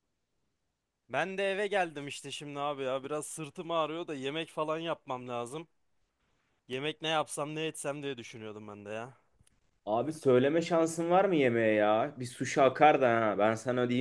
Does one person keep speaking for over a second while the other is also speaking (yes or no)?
no